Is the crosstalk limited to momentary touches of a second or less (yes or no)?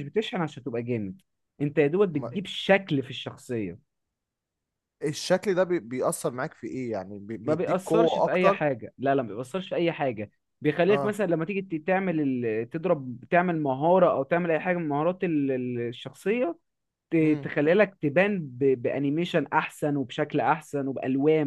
no